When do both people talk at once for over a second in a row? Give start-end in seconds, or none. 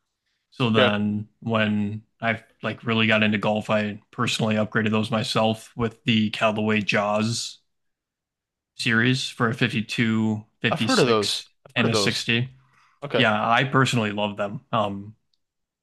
10.7-12.2